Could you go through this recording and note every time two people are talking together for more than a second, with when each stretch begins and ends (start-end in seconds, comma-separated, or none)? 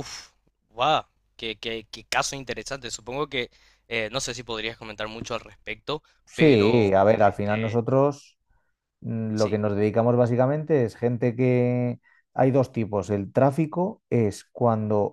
6.2-7.8